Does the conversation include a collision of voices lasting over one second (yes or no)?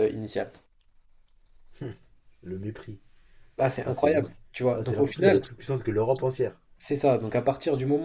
yes